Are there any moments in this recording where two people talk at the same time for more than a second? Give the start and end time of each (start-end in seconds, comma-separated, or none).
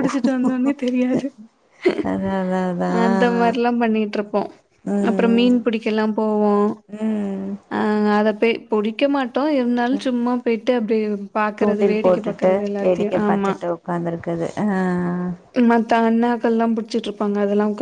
11.6-13.5